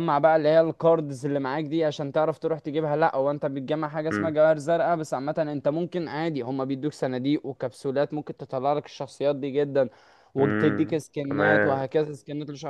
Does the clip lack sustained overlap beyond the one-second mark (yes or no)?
no